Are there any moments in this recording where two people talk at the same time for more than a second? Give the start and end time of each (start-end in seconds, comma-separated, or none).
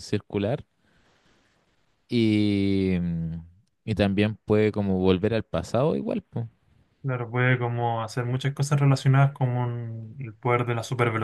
none